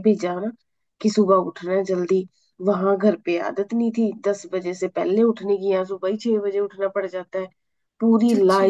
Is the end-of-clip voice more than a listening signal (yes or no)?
no